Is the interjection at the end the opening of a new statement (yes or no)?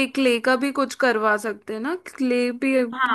yes